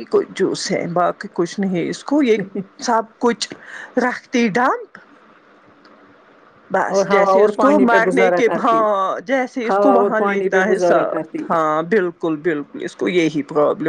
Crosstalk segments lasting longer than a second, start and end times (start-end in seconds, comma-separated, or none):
7.0-8.8, 9.7-11.5